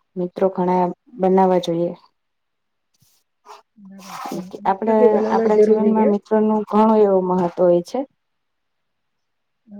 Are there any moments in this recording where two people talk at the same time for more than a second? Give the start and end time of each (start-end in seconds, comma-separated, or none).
4.7-6.1